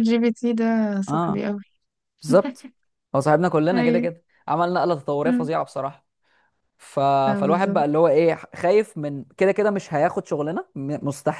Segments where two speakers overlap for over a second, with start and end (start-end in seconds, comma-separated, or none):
none